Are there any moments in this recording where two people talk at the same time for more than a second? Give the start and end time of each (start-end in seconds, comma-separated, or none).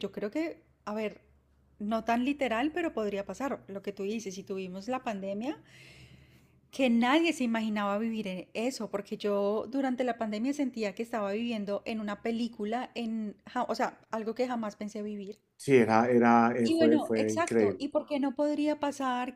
16.6-17.9